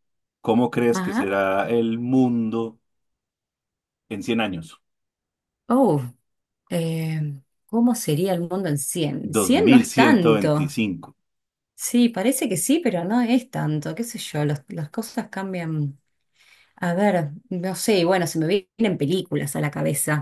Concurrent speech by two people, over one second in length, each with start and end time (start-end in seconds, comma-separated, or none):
9.4-10.8